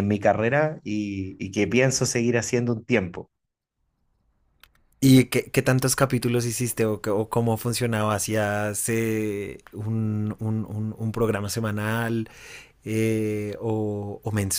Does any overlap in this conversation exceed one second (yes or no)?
no